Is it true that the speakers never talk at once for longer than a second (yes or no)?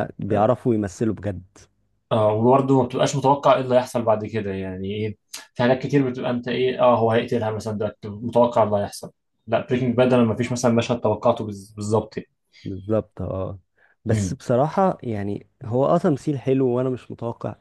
yes